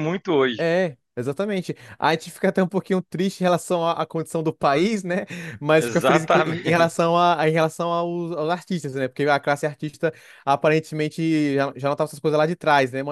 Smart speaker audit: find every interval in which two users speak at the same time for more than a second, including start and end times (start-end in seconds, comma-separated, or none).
5.8-7.0